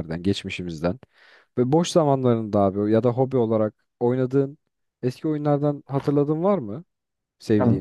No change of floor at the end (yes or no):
no